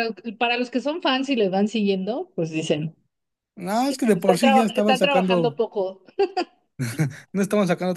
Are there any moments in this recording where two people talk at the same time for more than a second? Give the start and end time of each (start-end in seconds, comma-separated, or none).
4.1-5.6